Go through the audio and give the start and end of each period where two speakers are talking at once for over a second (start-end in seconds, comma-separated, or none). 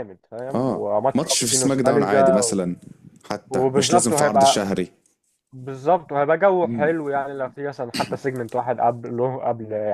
0.6-2.6, 3.5-4.7